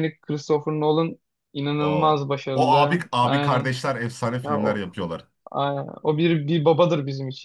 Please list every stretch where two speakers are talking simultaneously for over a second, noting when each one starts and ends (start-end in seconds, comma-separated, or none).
1.8-3.7